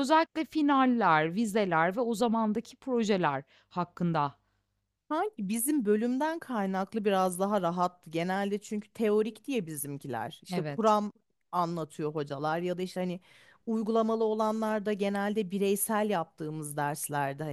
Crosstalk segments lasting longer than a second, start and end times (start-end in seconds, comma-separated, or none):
none